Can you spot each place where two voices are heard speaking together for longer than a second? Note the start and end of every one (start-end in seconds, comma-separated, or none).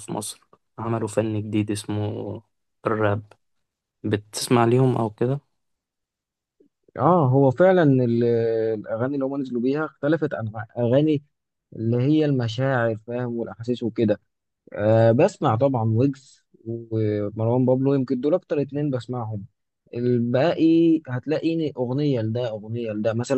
none